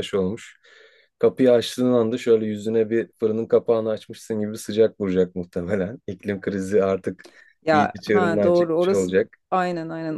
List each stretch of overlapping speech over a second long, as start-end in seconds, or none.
7.7-9.1